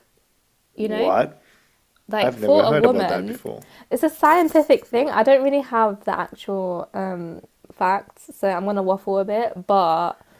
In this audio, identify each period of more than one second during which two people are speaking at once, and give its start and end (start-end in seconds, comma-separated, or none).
2.2-3.4